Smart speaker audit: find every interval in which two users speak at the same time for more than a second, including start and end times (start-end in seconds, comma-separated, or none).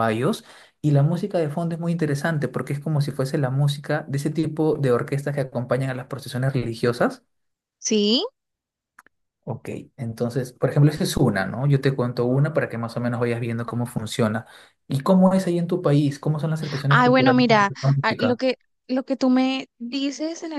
16.9-18.4